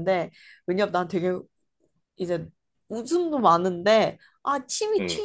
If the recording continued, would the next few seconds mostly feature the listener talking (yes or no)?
no